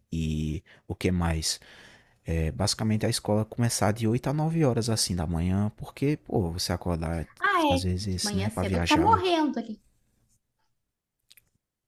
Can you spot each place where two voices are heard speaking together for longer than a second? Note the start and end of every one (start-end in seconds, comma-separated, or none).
7.7-9.2